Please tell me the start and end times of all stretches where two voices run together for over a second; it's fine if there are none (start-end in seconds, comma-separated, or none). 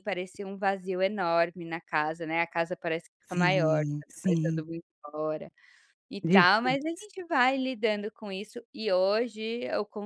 3.3-4.6